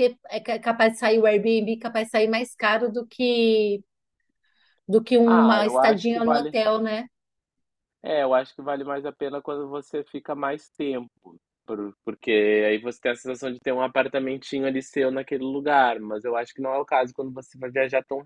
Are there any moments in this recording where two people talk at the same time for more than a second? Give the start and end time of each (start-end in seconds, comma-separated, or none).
5.2-6.5